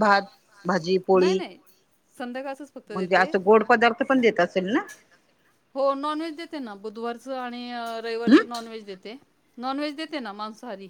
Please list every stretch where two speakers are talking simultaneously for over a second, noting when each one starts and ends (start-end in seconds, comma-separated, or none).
none